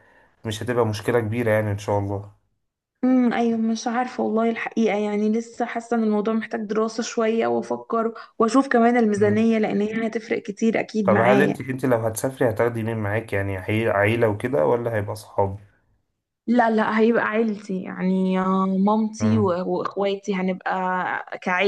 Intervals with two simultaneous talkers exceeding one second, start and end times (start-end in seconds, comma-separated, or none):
none